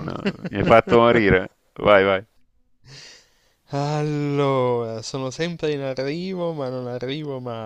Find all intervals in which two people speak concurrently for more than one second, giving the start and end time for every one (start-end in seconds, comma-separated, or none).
none